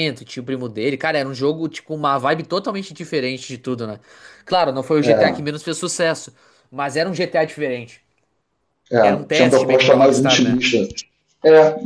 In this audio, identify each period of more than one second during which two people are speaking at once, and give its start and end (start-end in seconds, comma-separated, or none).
9.0-10.6